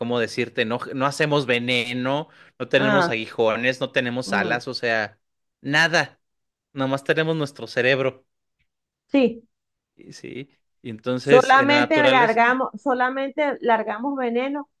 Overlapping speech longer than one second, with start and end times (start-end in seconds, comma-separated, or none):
11.2-12.6